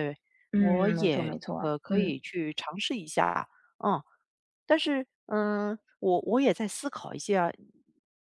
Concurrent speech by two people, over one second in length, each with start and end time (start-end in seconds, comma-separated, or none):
0.6-2.2